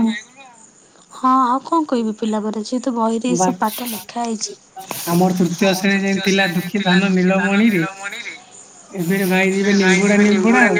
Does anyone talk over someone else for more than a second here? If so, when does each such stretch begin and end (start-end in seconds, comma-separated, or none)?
5.7-7.8